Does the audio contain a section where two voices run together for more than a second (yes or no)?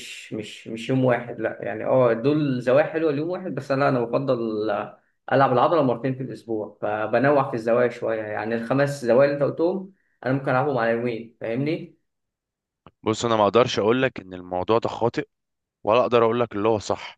no